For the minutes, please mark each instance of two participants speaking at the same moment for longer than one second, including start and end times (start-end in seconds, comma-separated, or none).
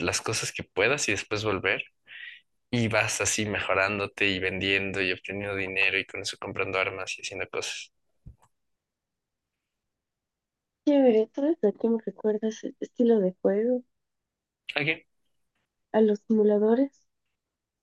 none